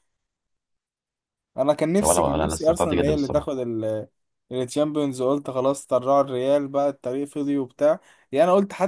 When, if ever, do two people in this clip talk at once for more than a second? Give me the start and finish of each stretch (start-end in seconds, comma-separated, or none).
2.0-3.5